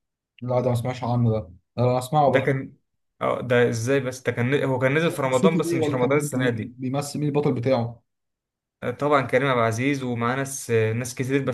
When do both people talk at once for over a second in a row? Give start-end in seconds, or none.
5.3-6.8